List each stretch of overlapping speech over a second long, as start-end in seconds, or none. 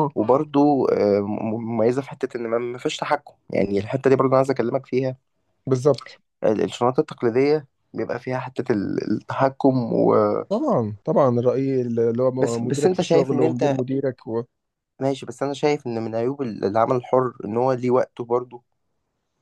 12.4-13.8